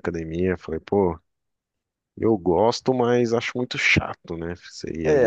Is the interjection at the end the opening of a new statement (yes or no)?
yes